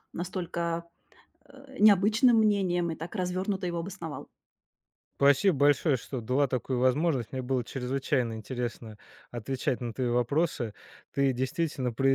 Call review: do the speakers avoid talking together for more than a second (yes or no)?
yes